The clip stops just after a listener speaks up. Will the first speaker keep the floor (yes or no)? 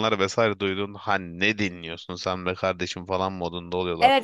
no